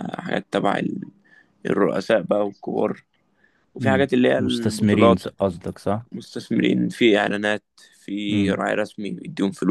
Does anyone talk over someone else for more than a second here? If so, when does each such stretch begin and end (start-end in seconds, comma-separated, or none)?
3.8-5.2